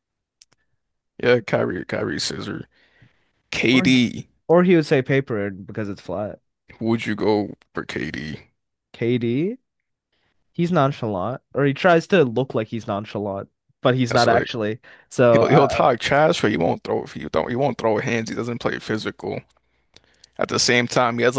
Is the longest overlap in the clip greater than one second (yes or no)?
no